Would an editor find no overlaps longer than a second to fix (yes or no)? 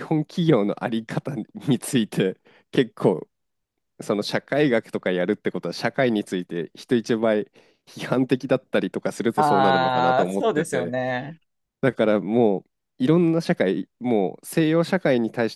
no